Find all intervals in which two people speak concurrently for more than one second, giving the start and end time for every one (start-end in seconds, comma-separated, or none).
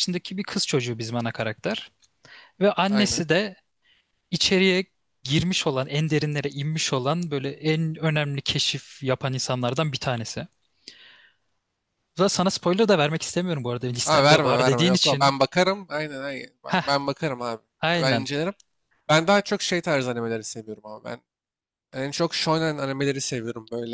14.1-15.3